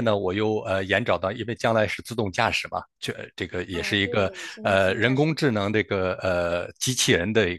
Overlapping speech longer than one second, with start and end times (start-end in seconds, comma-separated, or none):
3.7-5.8